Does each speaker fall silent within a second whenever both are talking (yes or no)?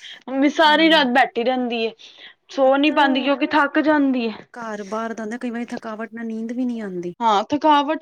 yes